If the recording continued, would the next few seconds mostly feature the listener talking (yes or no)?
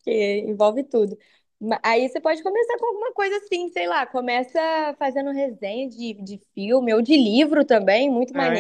yes